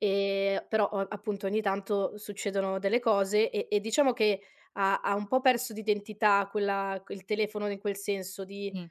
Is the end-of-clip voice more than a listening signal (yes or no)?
no